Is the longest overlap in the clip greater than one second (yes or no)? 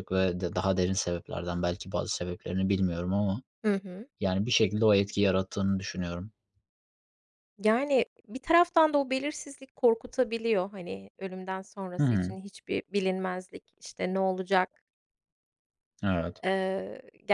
no